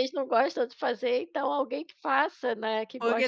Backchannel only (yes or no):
no